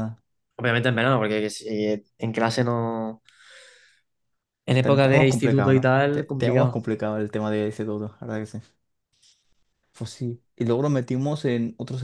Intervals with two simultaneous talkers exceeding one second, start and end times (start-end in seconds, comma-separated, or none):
4.8-6.8